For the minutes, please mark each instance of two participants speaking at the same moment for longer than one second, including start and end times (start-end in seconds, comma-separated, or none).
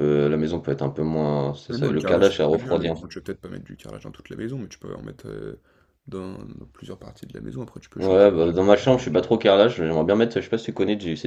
1.7-3.0